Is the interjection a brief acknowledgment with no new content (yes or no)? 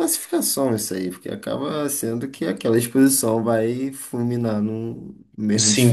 no